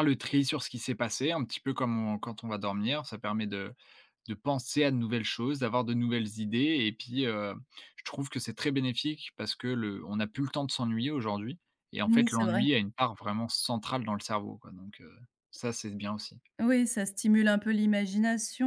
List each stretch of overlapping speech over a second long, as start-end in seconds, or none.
none